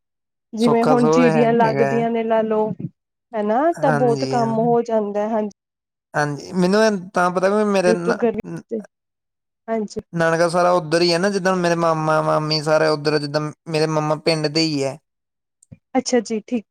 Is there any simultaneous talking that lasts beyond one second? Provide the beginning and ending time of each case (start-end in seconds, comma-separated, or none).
0.6-1.9